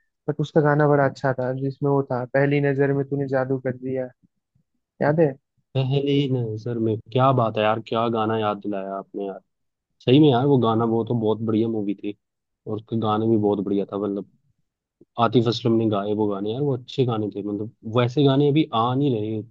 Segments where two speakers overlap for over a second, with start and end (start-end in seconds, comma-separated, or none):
none